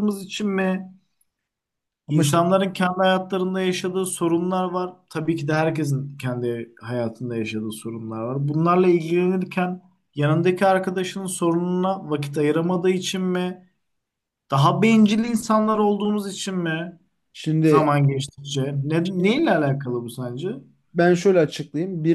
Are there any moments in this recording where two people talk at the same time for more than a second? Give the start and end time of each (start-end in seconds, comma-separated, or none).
none